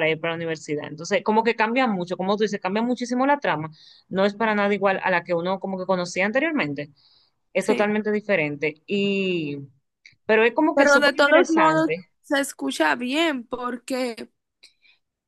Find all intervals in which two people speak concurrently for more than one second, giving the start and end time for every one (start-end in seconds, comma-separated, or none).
10.7-12.1